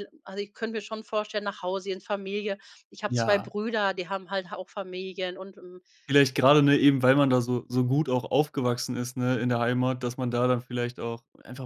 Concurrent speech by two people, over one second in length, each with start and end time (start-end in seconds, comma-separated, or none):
none